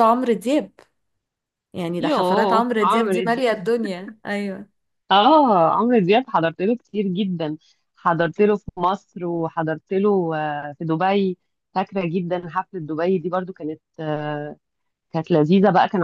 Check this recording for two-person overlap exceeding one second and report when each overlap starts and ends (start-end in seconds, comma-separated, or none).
2.0-3.7